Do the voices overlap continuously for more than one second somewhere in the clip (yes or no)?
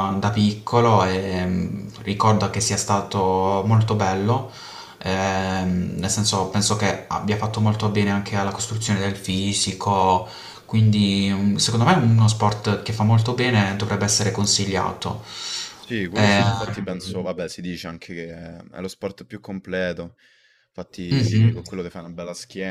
no